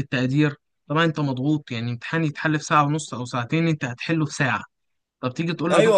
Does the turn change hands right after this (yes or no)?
yes